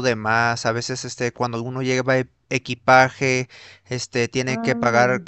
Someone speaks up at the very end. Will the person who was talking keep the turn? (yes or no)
yes